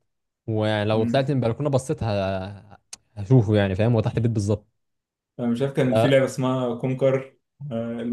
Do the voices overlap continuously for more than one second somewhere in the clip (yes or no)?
no